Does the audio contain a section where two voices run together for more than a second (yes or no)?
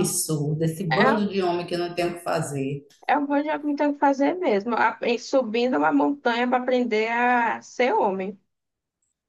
no